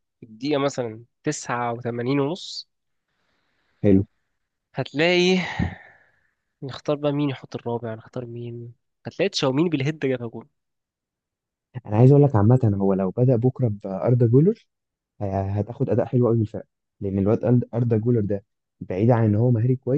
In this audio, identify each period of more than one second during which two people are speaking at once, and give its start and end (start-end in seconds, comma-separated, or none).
none